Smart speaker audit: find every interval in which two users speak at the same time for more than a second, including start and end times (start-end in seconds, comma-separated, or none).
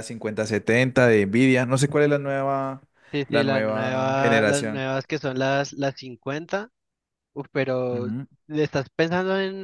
3.3-4.8